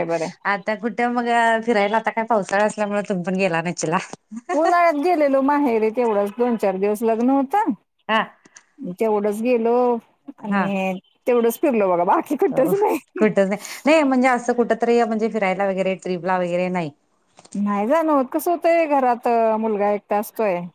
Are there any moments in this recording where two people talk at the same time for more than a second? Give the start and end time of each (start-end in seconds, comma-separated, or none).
none